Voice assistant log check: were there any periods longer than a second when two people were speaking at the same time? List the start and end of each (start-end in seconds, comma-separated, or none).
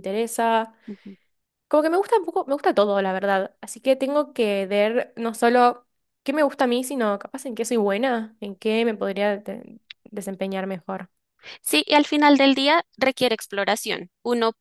none